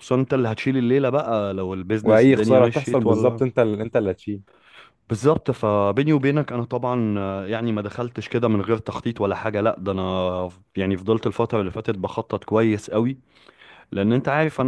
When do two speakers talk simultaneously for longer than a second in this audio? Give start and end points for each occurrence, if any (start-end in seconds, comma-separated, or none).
2.0-3.4